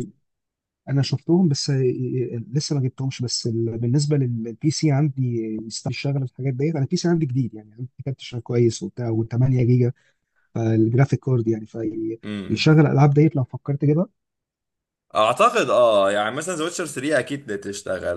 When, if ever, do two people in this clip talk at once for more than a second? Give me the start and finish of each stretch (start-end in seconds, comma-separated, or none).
none